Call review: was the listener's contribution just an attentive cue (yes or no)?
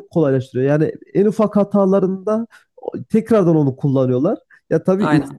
yes